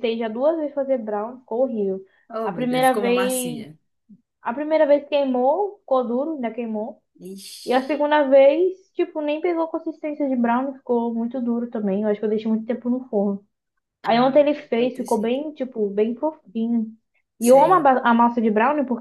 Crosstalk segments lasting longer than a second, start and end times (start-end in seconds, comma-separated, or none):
2.4-3.7, 14.0-15.4